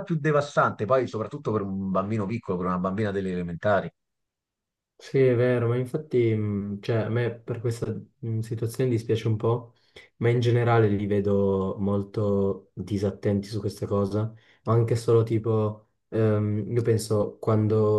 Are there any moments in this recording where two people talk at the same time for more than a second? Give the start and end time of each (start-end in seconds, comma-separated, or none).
none